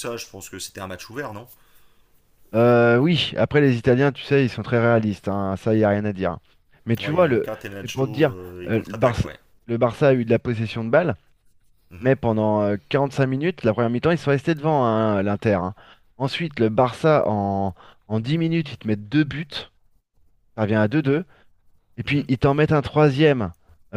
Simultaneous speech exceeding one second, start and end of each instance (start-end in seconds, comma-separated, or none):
7.0-9.3